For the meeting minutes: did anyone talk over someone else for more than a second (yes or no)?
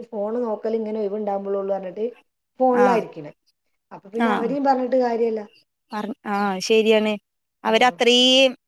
no